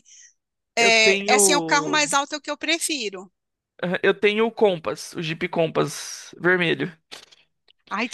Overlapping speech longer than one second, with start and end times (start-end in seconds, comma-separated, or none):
0.8-2.2